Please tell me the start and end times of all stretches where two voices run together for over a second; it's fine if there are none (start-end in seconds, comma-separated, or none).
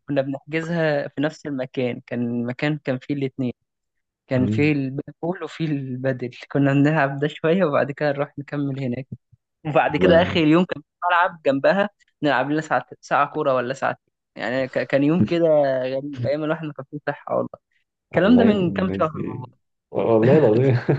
18.1-19.4